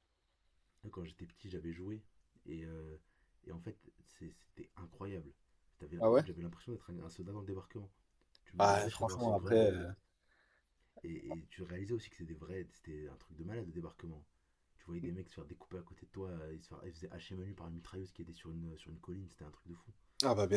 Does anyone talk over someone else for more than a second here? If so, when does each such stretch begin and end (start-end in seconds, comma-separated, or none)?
8.6-9.9